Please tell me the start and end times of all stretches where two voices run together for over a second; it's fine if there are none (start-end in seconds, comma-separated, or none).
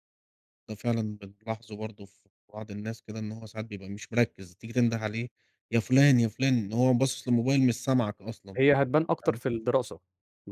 none